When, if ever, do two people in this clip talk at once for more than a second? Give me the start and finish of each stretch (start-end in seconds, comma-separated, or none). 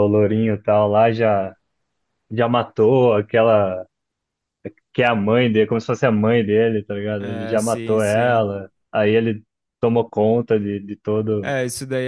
7.2-8.5